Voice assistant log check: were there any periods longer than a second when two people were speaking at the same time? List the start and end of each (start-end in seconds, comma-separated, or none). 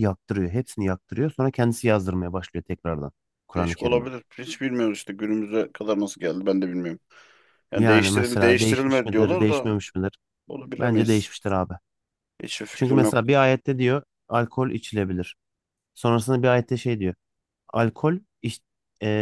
7.8-9.7